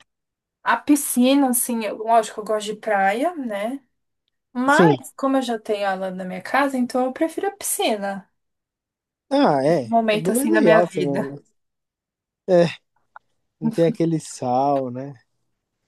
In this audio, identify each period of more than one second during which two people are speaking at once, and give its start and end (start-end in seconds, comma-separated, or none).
9.6-11.3